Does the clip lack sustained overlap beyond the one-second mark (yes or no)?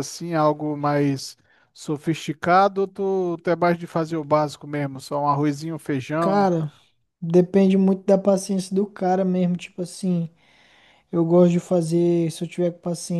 yes